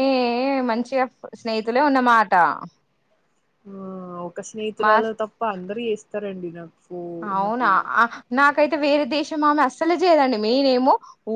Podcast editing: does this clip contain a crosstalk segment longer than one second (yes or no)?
no